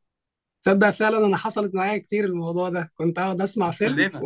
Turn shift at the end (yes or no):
no